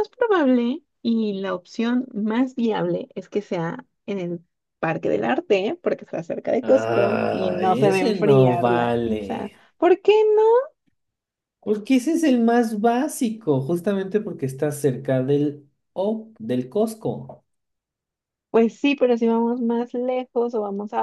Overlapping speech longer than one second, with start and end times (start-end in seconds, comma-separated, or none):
6.6-9.6